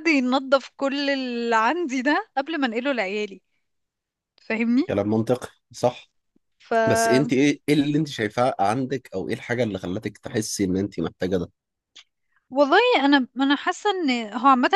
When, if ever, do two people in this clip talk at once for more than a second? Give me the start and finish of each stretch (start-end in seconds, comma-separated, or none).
none